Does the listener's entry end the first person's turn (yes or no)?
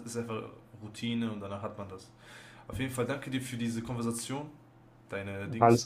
no